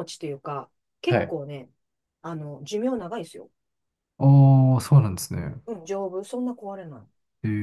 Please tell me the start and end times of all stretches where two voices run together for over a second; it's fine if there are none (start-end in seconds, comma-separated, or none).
none